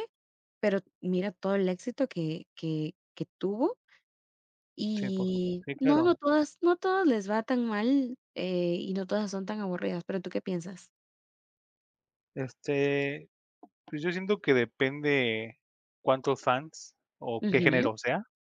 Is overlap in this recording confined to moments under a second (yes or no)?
no